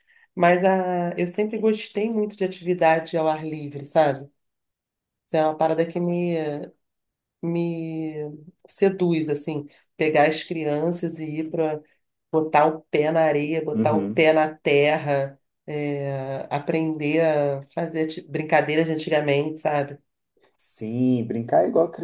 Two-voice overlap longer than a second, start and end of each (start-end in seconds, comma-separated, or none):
none